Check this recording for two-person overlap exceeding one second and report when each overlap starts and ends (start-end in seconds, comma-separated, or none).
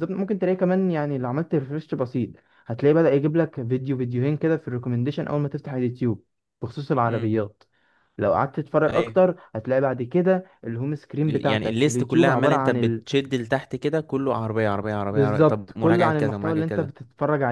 11.3-13.0, 15.1-16.6